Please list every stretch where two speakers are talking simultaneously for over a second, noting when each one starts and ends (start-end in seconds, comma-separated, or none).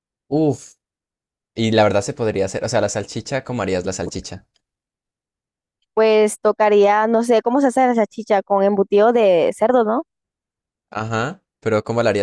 none